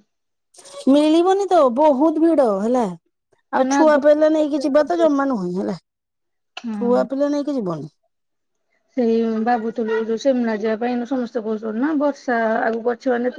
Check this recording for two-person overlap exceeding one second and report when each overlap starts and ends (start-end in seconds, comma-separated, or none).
3.6-5.0